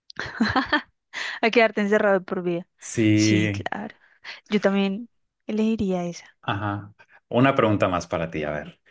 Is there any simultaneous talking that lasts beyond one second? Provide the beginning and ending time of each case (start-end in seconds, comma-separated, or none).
none